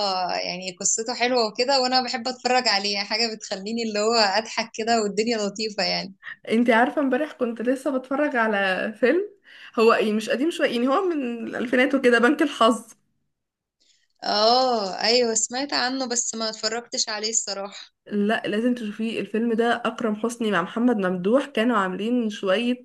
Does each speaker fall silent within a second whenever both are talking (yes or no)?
yes